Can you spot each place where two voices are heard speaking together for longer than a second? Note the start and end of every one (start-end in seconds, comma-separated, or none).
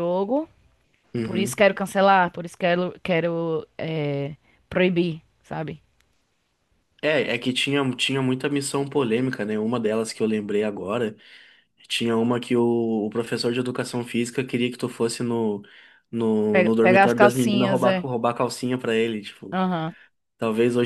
16.5-18.1